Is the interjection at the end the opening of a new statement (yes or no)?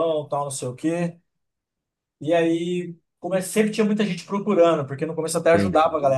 no